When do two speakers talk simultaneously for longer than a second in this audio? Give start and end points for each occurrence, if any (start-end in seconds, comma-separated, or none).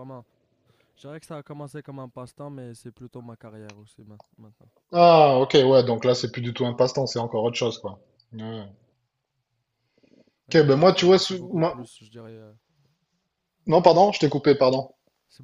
10.5-11.8